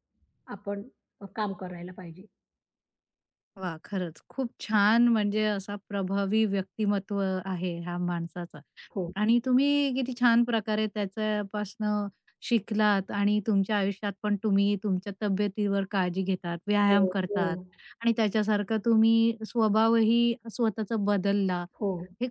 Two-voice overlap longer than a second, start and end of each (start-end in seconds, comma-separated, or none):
none